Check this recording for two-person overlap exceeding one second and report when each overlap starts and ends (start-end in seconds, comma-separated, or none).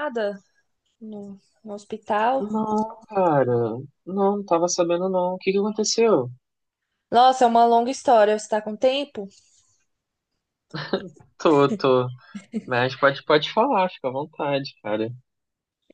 none